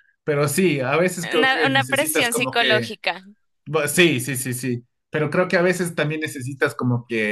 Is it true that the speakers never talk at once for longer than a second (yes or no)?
no